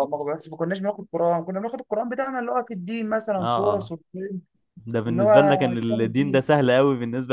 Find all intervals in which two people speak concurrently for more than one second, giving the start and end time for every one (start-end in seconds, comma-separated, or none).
5.1-6.5